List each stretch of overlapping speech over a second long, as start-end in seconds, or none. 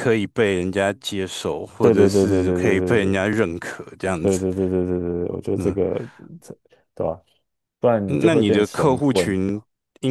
1.8-3.2, 8.1-9.4